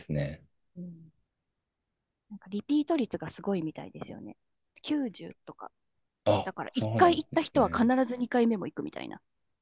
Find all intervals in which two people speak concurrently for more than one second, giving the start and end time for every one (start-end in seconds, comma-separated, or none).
6.4-7.9